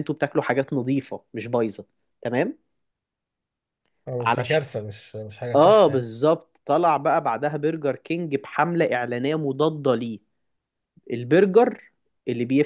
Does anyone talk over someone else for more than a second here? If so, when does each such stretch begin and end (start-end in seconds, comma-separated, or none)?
none